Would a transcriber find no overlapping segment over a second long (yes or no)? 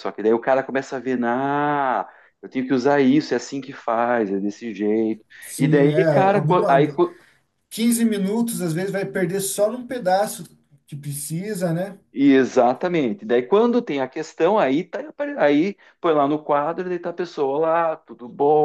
no